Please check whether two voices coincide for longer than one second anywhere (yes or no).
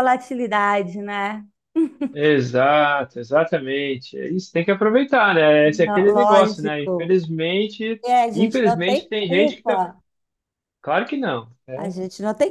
yes